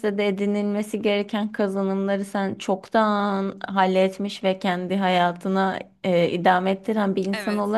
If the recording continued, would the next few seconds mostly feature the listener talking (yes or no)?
no